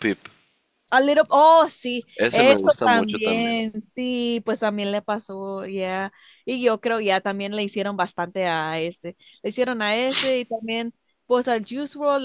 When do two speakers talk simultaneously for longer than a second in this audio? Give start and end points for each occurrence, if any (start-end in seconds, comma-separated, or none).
2.2-3.6